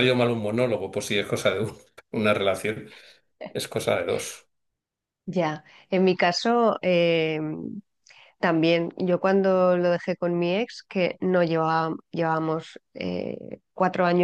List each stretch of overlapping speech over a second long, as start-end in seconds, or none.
none